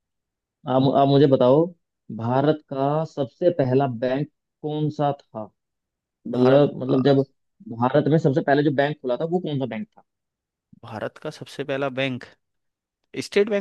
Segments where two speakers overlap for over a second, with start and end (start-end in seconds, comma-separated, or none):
none